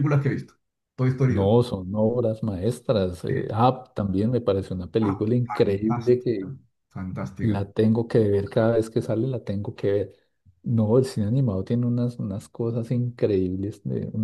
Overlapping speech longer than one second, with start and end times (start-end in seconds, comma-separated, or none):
5.0-6.5